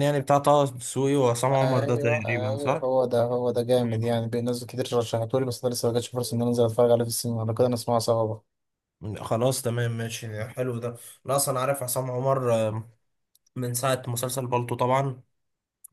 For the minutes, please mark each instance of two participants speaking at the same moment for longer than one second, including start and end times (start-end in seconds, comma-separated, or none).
1.6-2.9